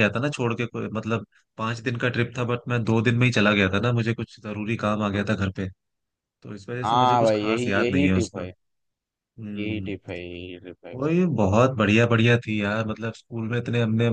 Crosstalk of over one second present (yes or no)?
yes